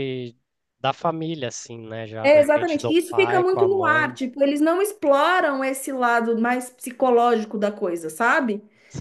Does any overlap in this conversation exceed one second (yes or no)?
yes